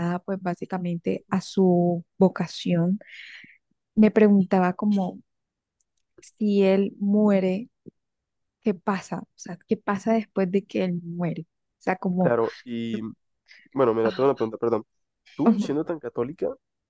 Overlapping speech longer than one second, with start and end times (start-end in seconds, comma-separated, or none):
none